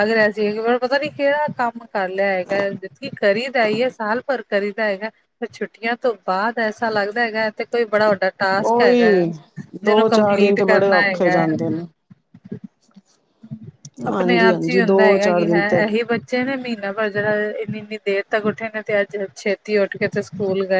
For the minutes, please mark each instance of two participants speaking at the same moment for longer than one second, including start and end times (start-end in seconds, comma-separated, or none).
9.8-11.4, 14.1-15.8